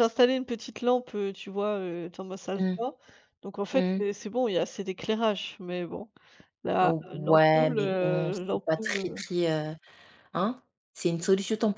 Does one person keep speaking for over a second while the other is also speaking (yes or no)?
yes